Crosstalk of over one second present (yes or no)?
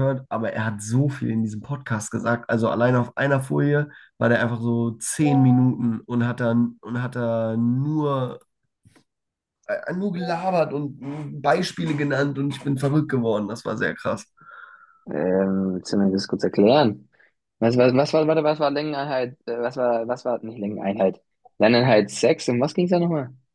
no